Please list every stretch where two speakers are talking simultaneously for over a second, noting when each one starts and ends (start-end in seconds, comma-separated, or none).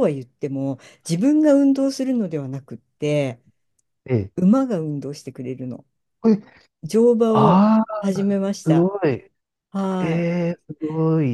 none